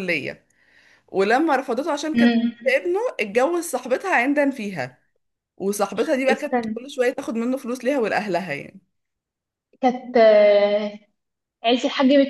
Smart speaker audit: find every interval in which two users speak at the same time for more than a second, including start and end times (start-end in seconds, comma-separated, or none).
none